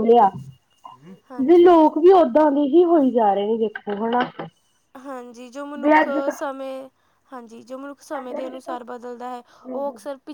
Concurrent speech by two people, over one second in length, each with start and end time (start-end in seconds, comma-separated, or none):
none